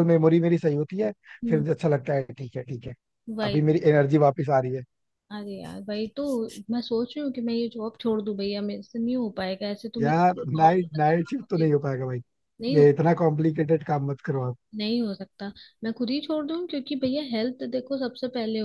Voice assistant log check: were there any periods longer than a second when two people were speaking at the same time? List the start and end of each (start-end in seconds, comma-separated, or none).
10.0-11.7